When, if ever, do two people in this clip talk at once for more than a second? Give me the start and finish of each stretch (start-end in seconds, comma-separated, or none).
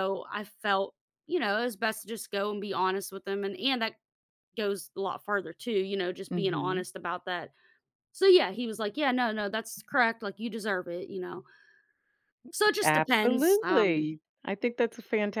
12.8-14.0